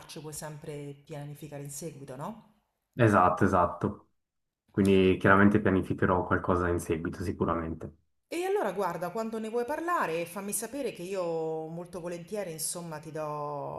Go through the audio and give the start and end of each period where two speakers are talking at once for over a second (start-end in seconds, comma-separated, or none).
none